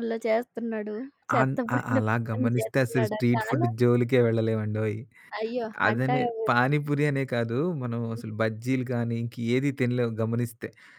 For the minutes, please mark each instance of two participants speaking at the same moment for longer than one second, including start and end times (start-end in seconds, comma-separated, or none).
1.4-3.7